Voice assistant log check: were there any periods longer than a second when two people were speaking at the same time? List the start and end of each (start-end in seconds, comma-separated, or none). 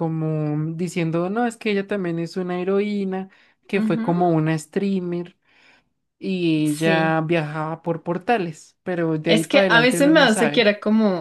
9.3-10.7